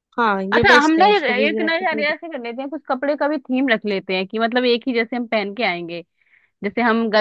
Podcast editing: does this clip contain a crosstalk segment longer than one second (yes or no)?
yes